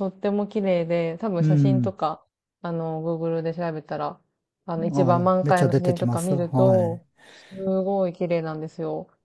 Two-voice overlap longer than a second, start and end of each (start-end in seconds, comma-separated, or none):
4.9-7.2